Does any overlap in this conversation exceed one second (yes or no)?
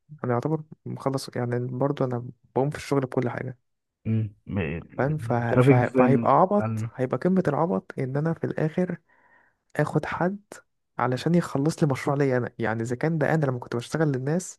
yes